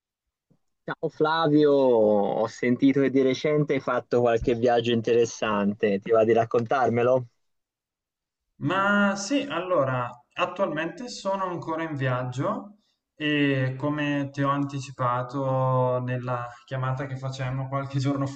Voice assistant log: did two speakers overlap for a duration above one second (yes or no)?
no